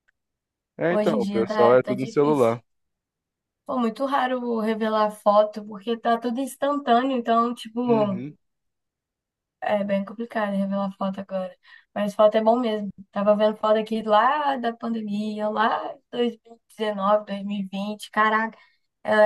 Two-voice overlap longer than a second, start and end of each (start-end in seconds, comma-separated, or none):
0.9-2.6